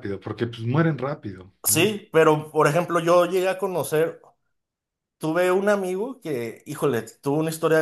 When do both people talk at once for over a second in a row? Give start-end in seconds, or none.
none